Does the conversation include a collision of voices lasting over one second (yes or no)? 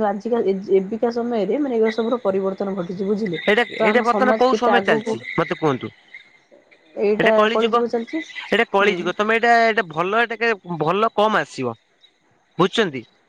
yes